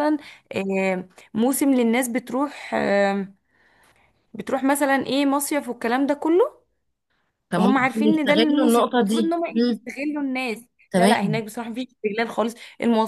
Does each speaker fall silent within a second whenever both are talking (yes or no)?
no